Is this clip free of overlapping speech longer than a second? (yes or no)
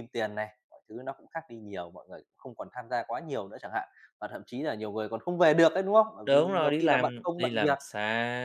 no